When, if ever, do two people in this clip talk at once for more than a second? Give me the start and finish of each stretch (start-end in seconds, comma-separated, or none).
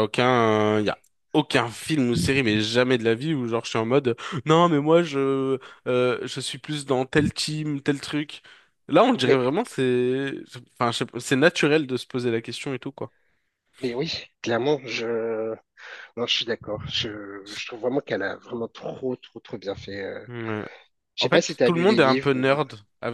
21.2-22.6